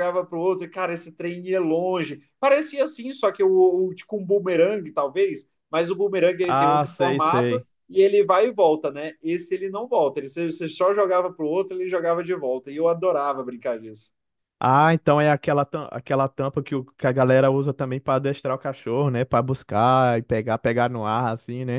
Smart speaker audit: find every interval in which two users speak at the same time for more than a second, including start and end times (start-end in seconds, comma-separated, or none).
6.5-7.7